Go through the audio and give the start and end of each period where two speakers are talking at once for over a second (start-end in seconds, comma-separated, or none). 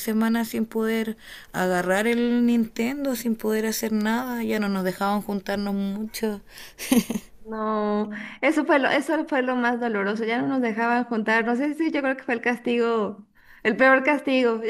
none